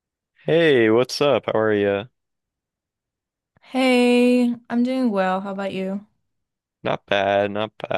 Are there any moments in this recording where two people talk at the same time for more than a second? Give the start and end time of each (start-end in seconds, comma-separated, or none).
none